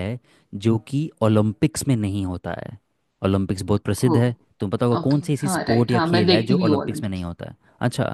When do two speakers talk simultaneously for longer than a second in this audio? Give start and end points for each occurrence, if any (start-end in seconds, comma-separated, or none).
5.0-7.3